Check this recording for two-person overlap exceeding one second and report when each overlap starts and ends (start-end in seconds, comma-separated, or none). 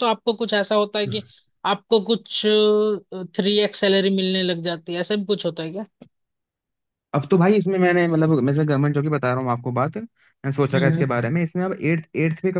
none